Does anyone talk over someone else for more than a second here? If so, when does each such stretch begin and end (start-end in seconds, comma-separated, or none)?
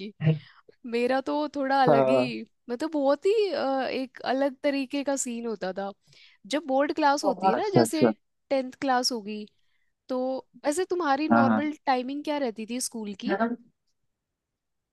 none